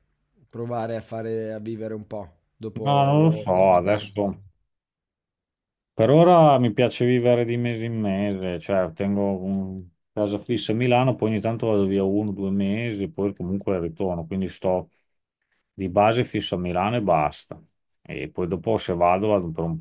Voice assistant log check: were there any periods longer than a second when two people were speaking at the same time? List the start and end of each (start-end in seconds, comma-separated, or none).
2.8-4.1